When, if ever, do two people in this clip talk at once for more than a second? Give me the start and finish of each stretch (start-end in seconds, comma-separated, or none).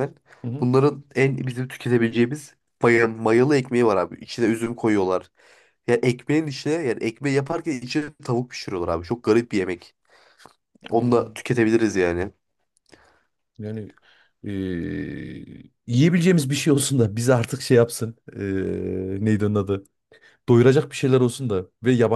none